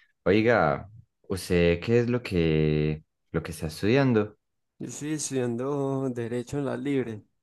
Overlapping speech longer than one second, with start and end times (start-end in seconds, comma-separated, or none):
none